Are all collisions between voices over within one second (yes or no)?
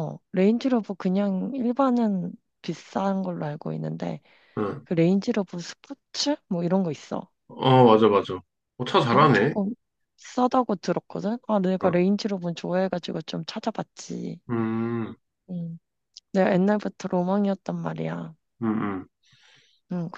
yes